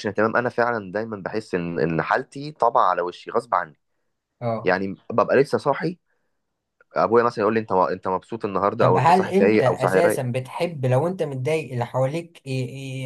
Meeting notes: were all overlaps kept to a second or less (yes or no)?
no